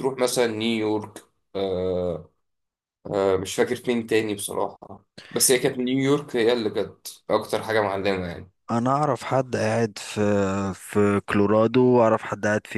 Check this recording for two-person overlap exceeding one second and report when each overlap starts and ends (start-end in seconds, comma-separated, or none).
none